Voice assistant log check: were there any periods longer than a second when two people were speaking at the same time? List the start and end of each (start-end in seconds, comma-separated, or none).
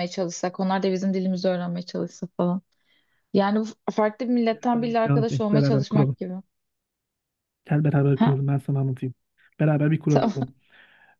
4.5-6.2